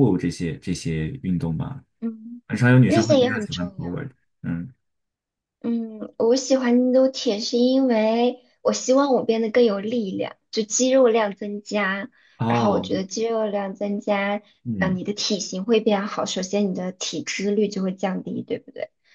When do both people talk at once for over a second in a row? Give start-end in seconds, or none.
2.8-4.0